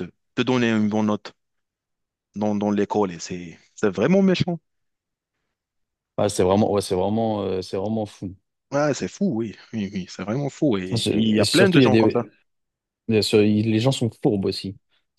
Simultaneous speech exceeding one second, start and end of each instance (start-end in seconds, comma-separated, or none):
10.9-12.3